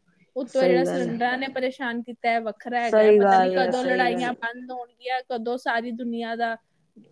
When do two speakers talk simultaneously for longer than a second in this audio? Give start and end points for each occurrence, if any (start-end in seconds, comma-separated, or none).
2.9-4.3